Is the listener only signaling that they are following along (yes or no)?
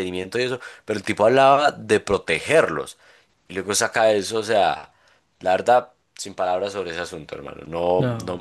yes